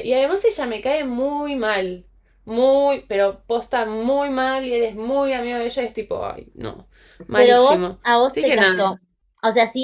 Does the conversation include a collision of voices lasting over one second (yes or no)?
yes